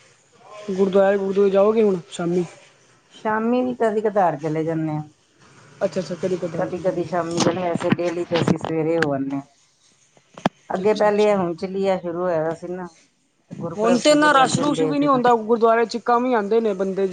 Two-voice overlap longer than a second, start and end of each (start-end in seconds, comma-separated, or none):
13.8-15.2